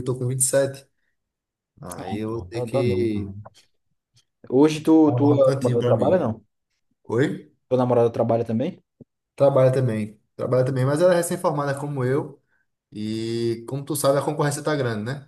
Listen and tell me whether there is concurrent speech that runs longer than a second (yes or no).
yes